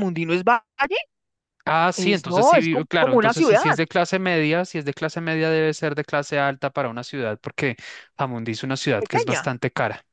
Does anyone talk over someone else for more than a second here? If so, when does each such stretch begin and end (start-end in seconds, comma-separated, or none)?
1.9-3.6